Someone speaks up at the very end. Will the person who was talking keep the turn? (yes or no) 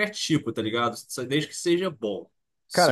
no